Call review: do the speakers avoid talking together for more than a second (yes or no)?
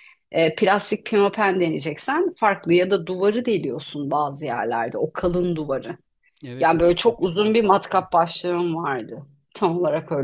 no